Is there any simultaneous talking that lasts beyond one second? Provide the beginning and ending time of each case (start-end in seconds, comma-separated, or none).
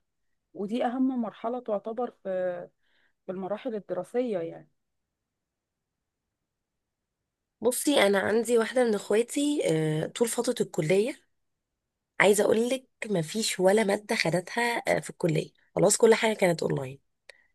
none